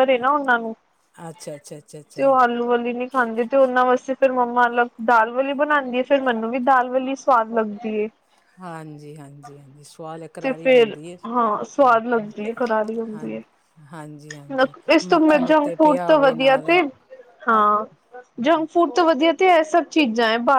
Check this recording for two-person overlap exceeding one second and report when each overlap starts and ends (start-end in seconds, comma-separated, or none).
14.6-16.7